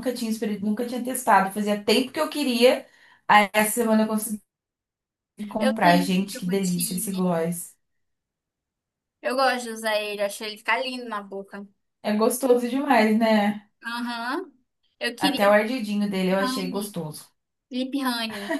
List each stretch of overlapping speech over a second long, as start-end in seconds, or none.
5.6-7.3